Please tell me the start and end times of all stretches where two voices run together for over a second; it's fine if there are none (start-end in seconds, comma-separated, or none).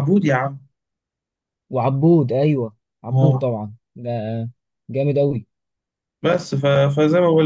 none